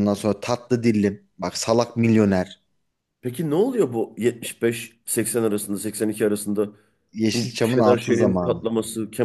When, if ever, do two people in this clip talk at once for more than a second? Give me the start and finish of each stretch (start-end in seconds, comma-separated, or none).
7.3-8.6